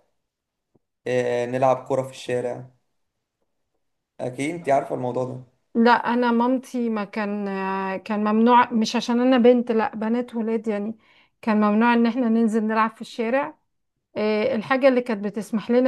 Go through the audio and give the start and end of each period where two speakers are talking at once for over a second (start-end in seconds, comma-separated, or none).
none